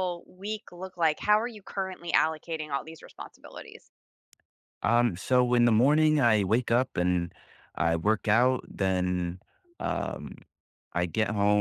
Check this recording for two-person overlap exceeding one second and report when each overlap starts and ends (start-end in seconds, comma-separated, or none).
none